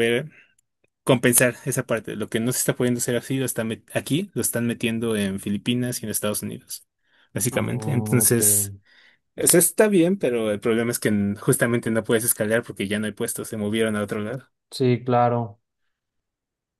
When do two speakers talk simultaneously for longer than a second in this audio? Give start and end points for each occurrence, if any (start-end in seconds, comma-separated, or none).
7.5-8.7